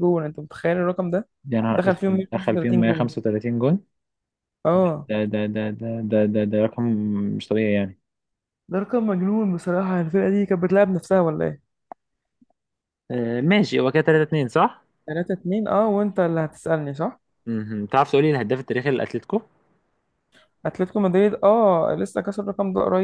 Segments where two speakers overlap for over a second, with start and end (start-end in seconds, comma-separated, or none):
1.7-3.1